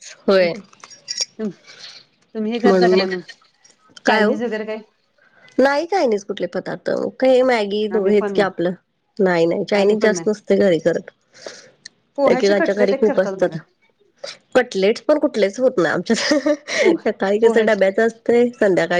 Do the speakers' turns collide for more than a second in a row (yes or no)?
yes